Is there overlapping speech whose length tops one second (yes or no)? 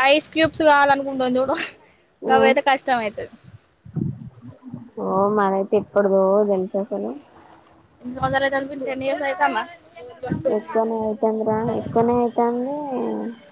no